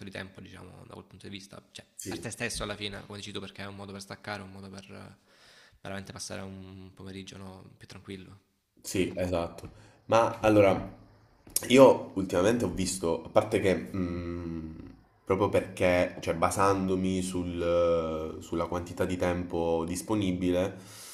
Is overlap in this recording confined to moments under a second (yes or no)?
yes